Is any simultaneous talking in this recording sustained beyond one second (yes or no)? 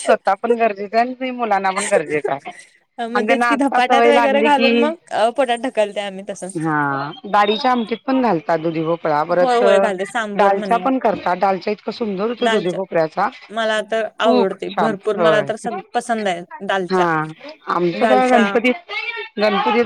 yes